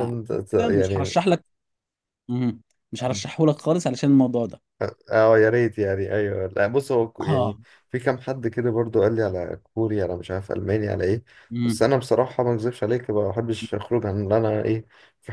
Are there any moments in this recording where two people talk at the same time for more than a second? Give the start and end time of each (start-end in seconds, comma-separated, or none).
none